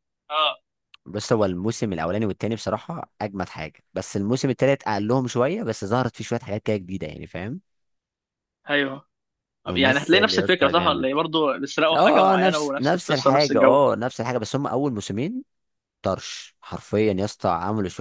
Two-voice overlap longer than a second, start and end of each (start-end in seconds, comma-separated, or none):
9.7-11.1, 11.9-13.8